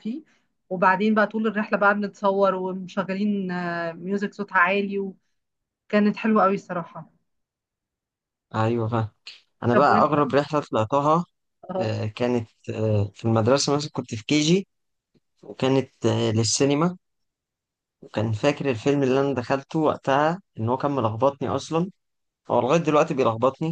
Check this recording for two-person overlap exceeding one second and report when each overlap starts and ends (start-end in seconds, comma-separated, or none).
none